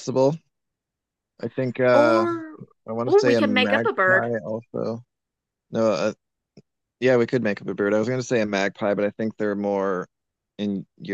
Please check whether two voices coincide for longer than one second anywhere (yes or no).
yes